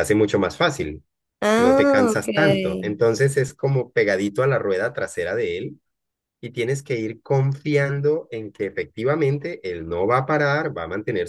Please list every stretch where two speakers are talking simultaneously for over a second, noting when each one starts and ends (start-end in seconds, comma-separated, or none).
1.6-3.0